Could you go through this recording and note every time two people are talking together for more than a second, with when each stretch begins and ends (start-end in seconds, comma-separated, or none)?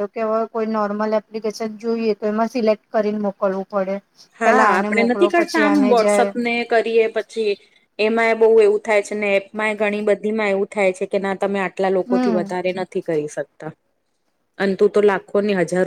4.4-6.3